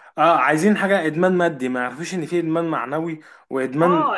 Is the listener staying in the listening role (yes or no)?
no